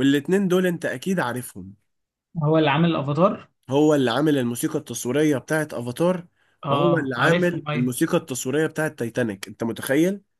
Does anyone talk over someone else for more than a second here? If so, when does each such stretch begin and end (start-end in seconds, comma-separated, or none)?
6.7-7.9